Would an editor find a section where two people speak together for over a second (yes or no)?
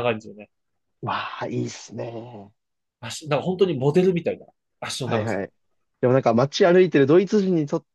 no